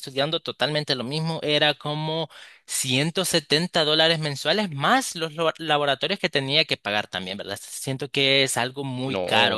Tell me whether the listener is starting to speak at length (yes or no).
yes